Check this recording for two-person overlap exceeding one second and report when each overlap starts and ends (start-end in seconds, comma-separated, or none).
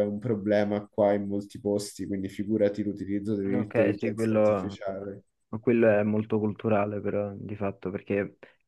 3.5-4.8